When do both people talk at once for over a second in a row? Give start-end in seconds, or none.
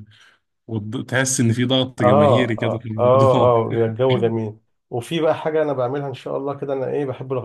2.0-3.5